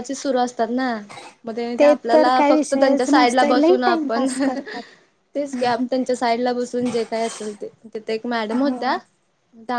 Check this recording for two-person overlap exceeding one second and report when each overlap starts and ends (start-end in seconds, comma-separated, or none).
2.1-4.3